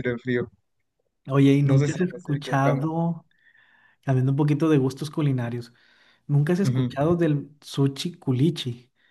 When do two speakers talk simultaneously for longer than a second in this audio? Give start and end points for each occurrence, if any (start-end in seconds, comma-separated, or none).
1.6-2.9